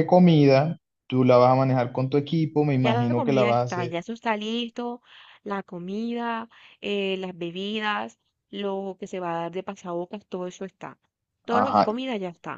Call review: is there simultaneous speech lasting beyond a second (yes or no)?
yes